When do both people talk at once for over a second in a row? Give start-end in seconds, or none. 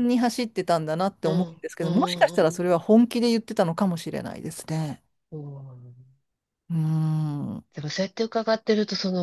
1.2-2.6